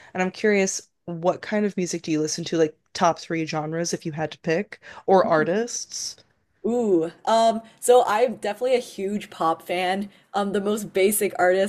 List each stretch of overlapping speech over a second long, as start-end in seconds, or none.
none